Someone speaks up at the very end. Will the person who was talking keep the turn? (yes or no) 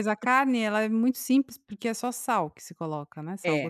no